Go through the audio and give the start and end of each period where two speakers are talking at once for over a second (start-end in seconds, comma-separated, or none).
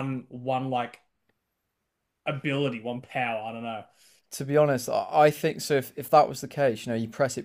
none